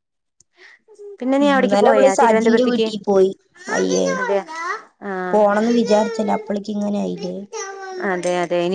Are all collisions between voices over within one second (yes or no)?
no